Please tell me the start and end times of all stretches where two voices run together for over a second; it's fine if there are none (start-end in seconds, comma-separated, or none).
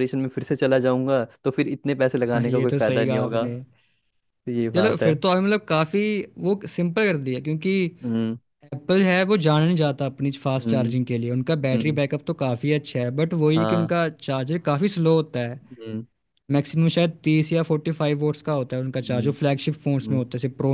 2.3-3.5